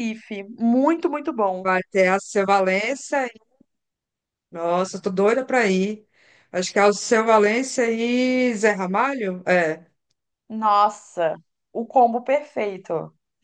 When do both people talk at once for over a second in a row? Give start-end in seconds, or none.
none